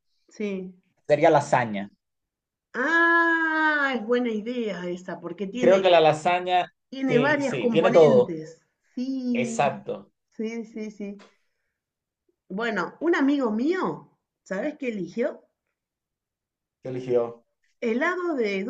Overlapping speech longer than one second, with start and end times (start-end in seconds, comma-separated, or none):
6.9-8.4